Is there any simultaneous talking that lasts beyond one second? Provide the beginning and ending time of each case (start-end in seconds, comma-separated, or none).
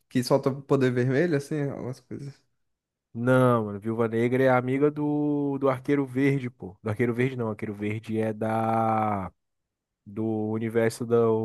none